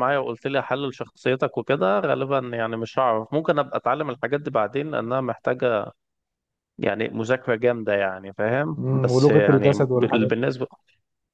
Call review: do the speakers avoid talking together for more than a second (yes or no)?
no